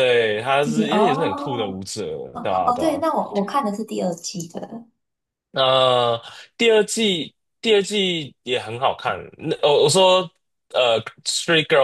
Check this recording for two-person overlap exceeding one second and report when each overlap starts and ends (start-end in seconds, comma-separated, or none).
0.6-1.8